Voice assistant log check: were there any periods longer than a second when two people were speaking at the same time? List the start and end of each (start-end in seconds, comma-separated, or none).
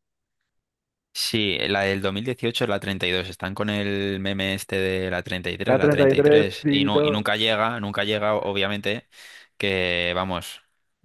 5.6-7.2